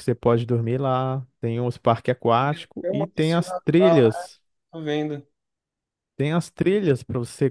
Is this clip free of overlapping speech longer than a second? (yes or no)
no